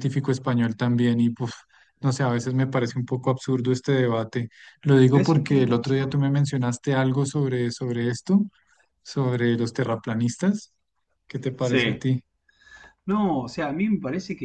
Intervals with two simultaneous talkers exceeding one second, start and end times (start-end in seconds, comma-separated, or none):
5.1-6.3